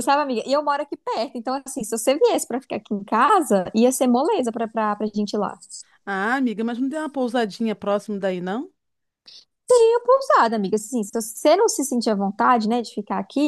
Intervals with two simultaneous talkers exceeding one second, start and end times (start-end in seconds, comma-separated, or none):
none